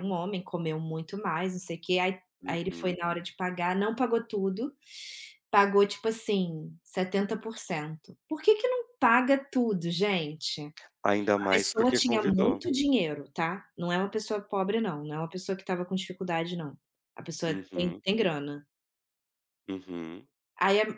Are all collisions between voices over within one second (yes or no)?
no